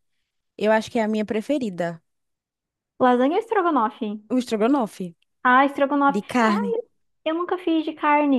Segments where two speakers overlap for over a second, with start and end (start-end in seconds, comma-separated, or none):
none